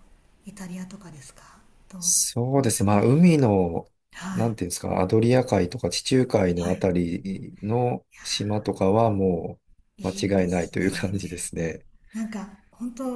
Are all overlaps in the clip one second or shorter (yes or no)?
no